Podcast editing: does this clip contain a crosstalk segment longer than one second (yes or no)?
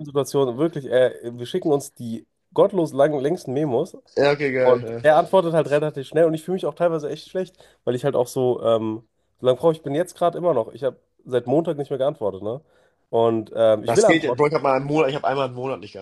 no